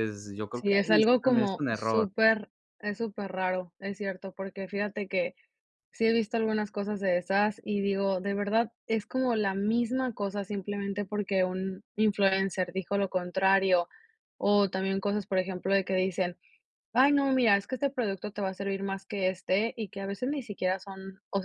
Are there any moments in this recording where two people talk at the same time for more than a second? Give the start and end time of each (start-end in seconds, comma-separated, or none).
0.5-2.1